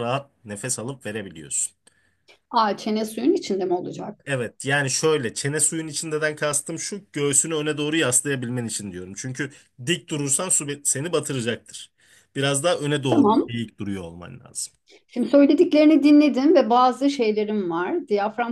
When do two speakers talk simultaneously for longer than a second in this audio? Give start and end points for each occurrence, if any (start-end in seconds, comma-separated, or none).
none